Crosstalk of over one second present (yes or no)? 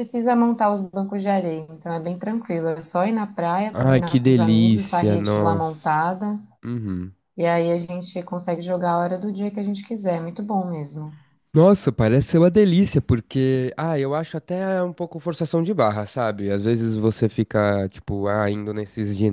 yes